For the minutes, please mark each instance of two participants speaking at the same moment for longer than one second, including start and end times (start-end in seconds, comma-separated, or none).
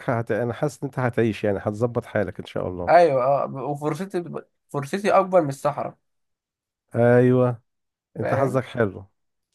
none